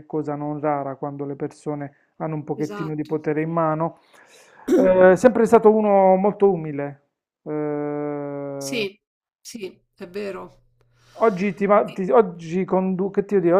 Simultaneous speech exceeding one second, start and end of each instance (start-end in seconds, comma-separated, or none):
none